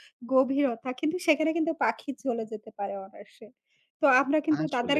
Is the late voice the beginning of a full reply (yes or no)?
no